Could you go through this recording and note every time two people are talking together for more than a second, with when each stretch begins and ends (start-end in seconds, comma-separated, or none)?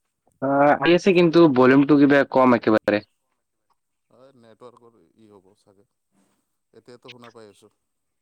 none